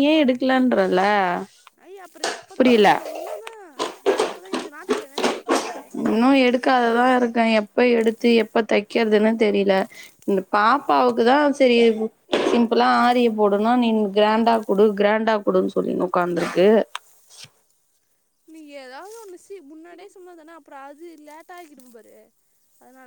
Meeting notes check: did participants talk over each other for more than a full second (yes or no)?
no